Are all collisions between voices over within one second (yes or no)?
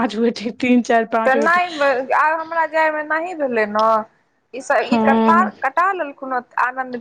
yes